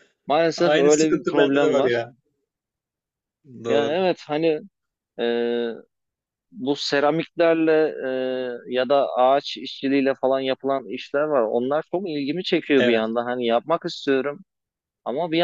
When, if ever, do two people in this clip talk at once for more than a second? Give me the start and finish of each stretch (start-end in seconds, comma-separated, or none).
0.6-2.0